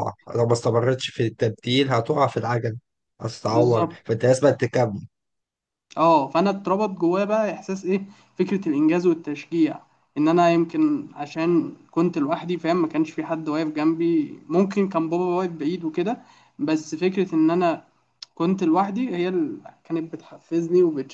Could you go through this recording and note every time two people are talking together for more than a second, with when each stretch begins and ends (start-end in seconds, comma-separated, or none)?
none